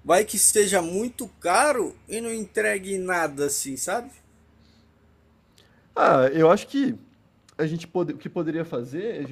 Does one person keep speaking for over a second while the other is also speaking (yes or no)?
no